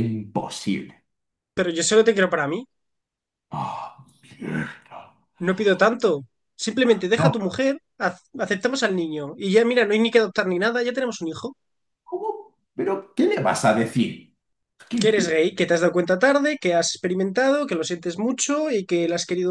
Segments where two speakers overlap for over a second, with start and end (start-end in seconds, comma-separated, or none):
none